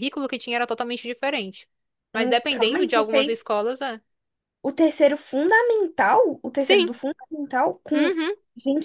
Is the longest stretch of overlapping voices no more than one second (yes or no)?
no